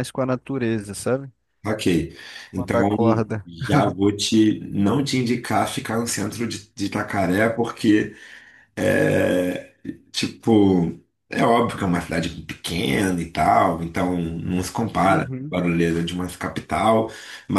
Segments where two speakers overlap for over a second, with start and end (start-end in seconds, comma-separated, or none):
none